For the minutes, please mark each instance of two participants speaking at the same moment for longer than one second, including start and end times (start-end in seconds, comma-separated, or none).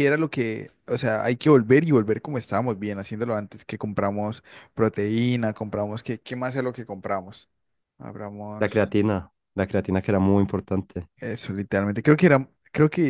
none